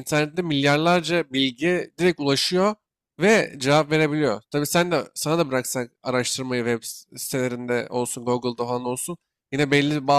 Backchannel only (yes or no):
yes